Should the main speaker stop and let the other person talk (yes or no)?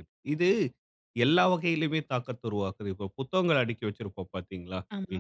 no